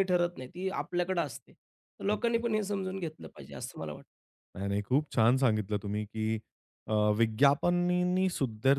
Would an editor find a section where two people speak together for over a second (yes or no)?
no